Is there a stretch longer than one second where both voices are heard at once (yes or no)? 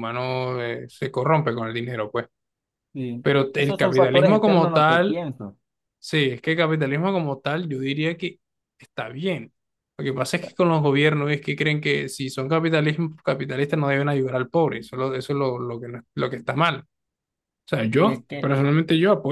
yes